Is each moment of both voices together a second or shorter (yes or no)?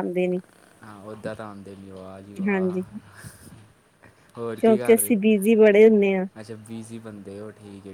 yes